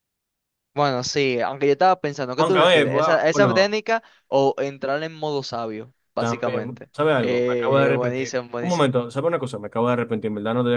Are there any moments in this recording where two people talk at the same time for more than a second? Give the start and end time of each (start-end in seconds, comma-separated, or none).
2.4-3.8, 6.2-8.9